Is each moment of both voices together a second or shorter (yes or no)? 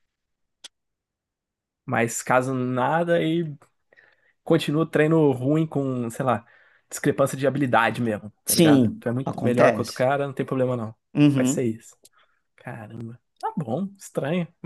no